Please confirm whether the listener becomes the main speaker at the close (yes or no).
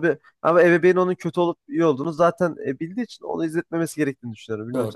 yes